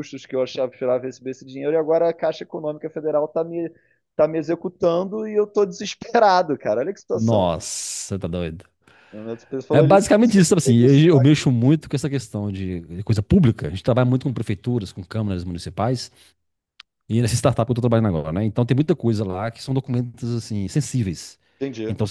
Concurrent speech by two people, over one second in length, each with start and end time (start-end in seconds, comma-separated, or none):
9.7-11.5